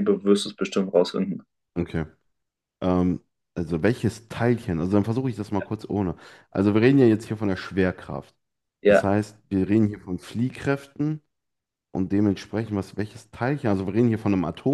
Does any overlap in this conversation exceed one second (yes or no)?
no